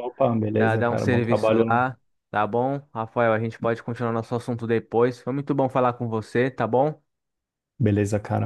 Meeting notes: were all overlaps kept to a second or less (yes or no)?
no